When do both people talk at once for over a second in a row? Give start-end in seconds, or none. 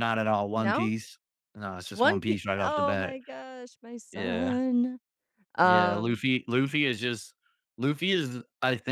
1.9-3.2